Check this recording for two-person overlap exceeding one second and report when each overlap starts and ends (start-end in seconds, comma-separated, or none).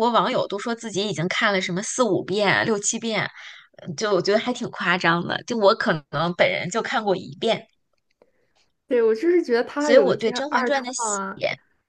9.8-11.2